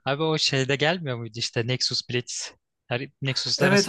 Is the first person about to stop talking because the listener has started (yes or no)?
yes